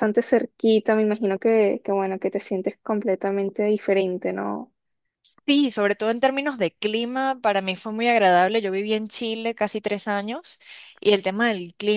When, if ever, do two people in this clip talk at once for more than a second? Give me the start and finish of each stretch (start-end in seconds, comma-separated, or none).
none